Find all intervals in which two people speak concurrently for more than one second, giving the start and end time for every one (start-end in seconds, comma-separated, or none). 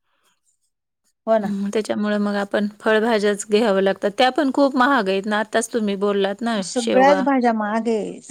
none